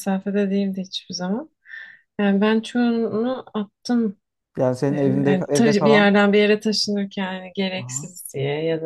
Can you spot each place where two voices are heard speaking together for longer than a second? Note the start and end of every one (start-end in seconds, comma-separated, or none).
4.9-6.2